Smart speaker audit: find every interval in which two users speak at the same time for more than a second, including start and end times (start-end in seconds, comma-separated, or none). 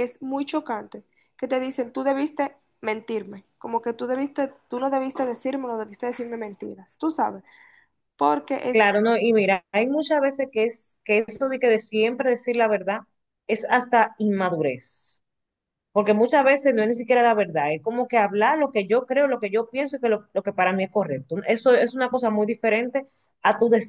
none